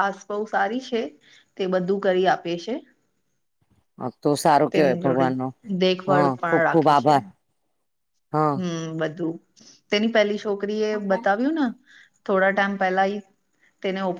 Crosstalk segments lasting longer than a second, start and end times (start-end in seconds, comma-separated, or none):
none